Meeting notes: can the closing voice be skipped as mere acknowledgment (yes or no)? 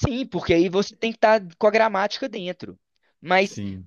yes